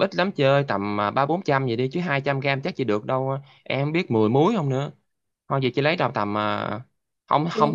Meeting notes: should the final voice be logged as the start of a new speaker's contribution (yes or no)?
no